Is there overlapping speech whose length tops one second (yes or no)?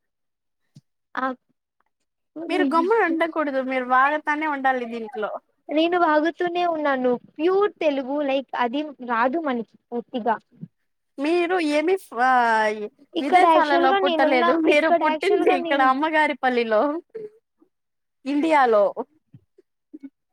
yes